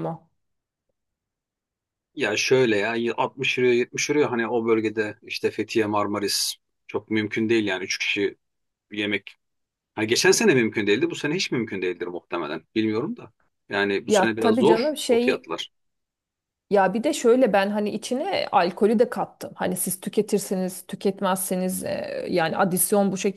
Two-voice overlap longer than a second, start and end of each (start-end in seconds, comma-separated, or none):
14.1-15.5